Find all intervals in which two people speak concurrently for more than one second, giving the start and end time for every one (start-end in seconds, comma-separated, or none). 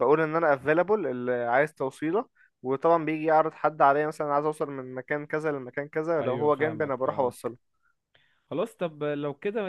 6.2-7.6